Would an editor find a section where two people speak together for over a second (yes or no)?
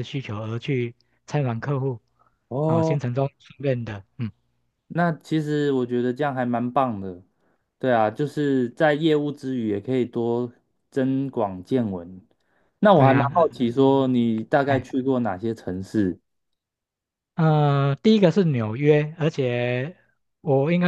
no